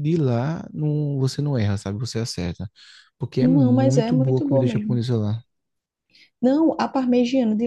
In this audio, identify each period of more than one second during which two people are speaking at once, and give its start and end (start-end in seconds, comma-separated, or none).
3.4-5.0